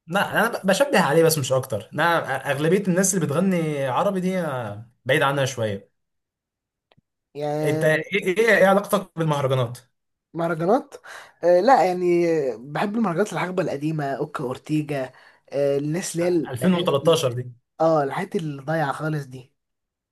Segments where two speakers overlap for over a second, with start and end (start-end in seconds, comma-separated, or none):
none